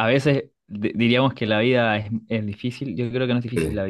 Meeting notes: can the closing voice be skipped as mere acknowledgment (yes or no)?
yes